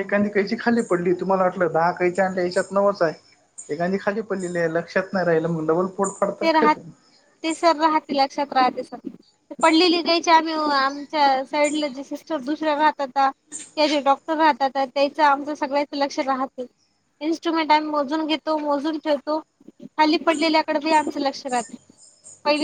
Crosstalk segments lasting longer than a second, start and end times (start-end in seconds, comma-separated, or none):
none